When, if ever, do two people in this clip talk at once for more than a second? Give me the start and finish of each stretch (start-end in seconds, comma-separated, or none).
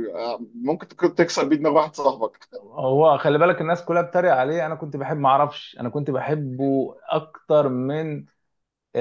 none